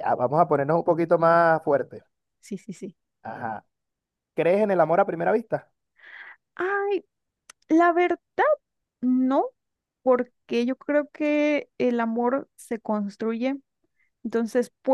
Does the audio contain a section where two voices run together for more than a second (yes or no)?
no